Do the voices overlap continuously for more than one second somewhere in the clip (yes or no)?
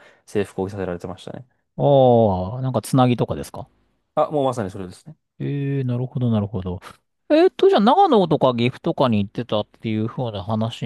no